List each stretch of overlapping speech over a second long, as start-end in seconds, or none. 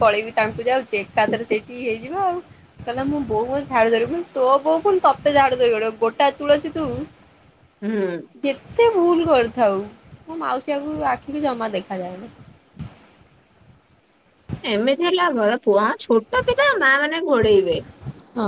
none